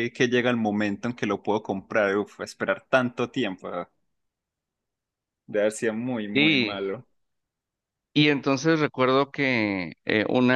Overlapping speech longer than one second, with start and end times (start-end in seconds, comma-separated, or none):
none